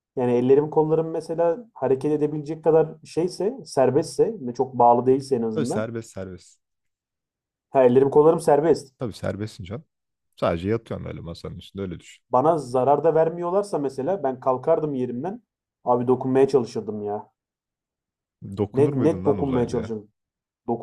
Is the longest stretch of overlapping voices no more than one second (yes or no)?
no